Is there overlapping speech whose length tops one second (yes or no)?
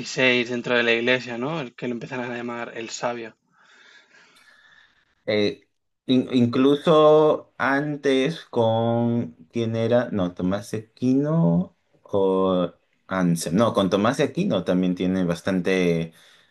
no